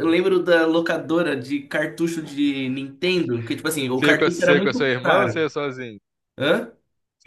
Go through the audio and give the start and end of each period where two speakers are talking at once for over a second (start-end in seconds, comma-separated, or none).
3.9-5.5